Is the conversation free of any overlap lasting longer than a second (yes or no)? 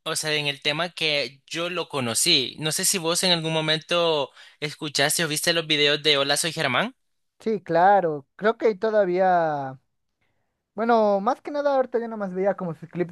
yes